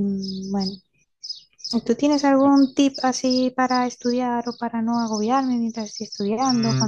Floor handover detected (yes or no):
yes